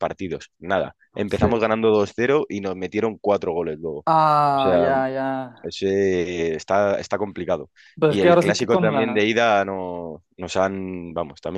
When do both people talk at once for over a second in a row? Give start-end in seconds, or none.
8.1-9.3